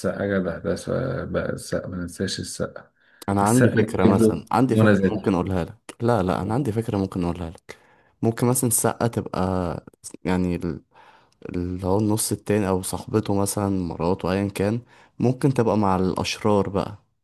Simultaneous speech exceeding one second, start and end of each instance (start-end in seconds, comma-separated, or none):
3.4-5.3